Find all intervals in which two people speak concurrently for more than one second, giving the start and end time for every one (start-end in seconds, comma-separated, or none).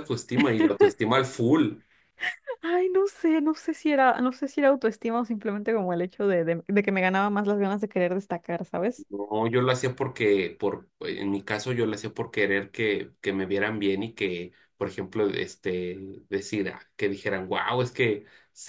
none